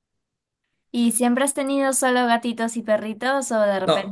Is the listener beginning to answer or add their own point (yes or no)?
yes